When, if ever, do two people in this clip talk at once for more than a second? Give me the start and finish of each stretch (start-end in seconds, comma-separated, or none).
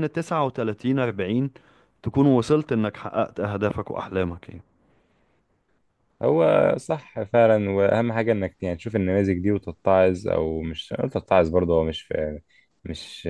none